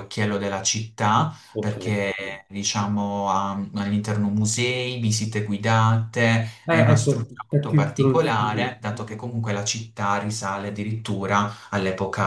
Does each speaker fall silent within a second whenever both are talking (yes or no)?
no